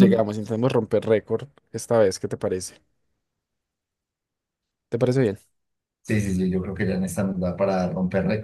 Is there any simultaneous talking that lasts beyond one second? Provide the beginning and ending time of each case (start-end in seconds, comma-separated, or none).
none